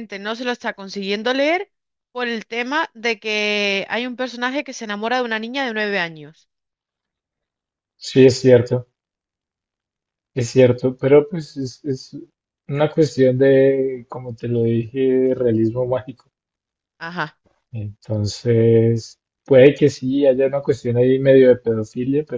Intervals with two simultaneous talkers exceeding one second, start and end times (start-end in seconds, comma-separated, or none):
none